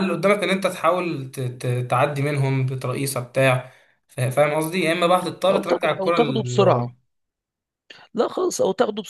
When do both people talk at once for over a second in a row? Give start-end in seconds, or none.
5.5-6.8